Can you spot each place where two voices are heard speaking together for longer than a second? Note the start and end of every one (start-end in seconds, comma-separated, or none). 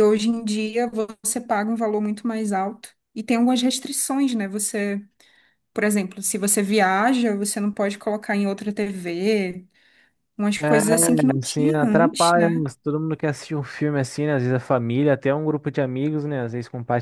10.6-12.6